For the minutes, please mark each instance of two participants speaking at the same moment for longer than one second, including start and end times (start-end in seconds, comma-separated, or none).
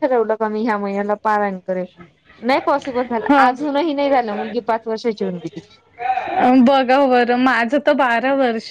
none